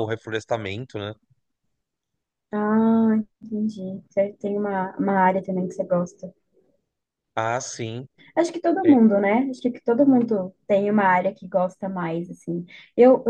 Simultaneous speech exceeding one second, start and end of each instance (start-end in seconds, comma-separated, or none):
none